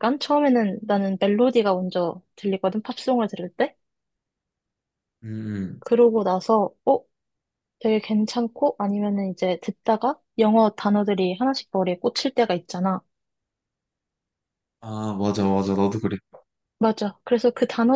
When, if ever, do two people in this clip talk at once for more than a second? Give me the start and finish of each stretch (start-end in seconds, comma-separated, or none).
none